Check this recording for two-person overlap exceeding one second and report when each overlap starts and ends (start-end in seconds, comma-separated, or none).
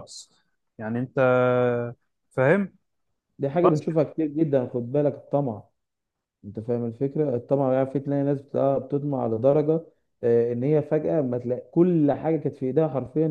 none